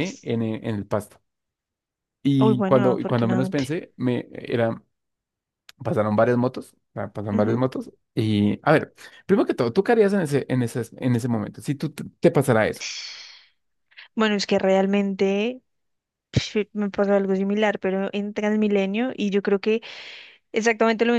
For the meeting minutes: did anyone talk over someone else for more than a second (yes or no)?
yes